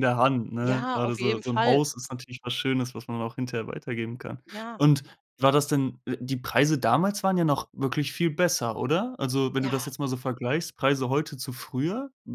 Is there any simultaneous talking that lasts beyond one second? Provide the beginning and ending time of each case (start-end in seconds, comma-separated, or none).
0.6-1.8